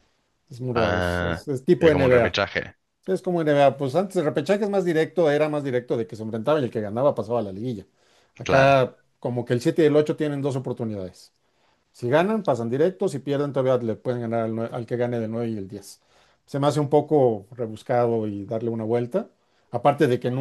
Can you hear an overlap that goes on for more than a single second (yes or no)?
yes